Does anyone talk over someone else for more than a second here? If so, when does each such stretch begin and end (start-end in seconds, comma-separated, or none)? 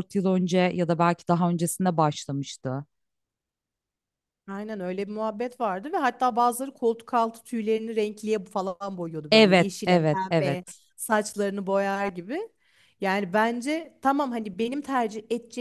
9.3-10.8